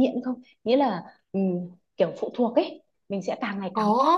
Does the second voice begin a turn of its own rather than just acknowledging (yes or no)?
yes